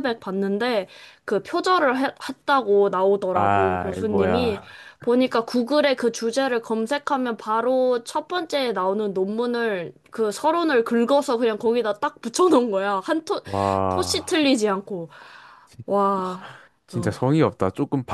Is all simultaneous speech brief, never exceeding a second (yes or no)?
no